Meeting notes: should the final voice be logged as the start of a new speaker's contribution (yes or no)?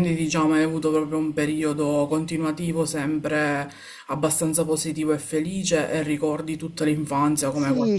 yes